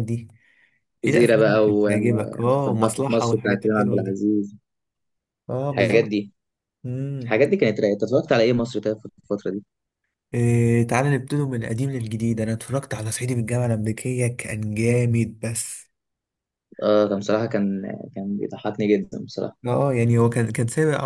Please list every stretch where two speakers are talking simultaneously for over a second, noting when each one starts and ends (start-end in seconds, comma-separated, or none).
1.1-4.2